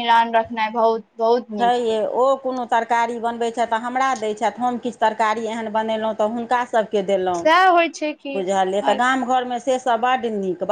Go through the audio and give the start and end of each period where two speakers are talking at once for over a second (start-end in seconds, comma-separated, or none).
none